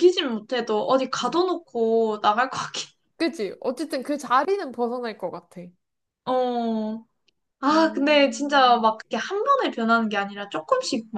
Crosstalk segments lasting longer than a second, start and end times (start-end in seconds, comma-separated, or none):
7.7-8.9